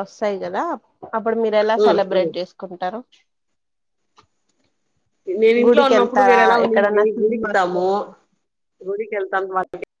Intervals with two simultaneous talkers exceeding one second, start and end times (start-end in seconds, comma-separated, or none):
5.6-7.8